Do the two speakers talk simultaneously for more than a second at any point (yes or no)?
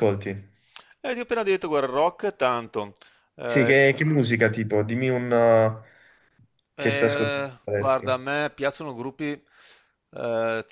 yes